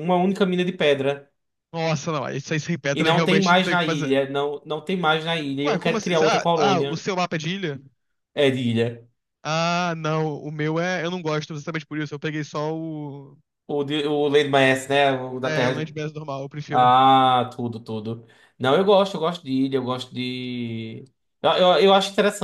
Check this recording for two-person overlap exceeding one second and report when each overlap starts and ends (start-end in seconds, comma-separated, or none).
2.9-4.2, 5.7-7.0